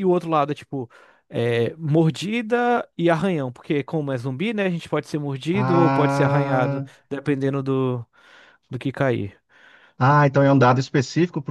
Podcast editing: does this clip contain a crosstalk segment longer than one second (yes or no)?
yes